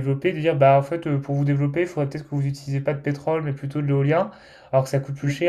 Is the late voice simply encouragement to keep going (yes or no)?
yes